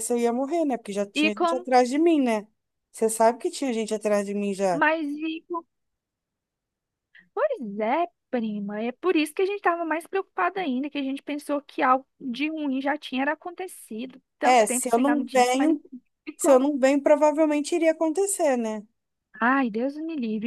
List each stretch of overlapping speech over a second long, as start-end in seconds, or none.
14.4-15.8